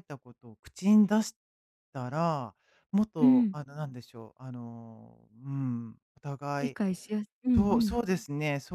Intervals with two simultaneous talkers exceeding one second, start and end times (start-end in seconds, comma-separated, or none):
none